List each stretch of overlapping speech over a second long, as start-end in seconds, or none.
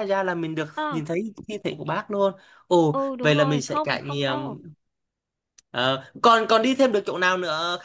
2.9-4.6